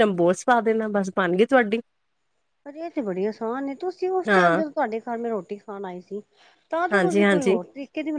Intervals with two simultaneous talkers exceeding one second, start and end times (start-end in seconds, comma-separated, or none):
none